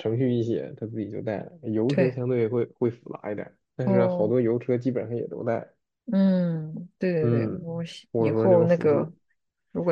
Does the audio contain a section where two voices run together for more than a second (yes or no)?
yes